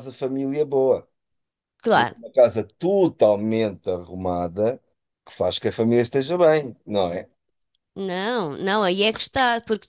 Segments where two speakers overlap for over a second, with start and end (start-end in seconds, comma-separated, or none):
none